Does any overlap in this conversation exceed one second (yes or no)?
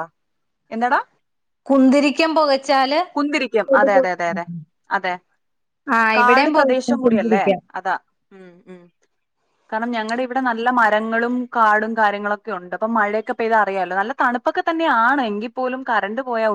yes